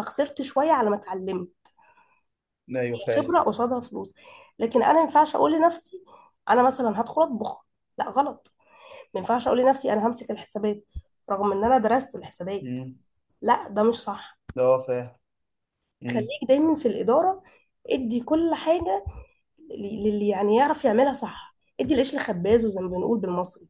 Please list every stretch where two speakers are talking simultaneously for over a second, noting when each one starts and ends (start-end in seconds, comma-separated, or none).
none